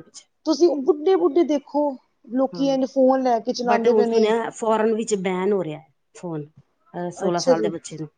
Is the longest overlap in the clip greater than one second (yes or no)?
no